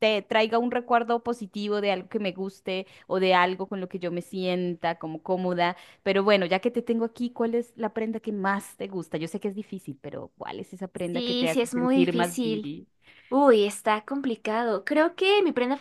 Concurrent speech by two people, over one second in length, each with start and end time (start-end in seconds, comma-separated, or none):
10.9-12.7